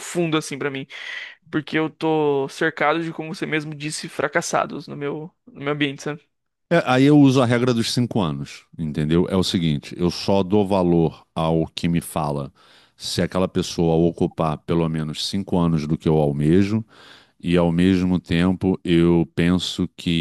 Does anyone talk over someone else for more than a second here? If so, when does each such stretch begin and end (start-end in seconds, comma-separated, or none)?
none